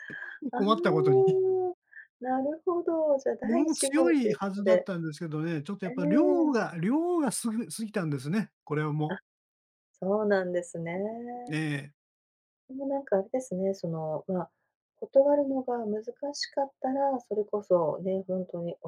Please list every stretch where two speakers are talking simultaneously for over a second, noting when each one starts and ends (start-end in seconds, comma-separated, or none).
3.4-4.9